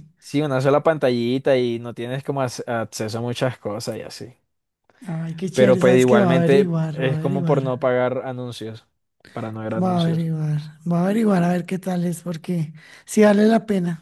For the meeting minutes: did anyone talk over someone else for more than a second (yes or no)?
yes